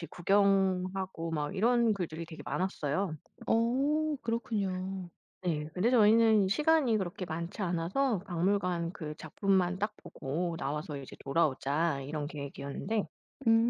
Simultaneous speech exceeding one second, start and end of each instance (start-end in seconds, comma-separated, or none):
none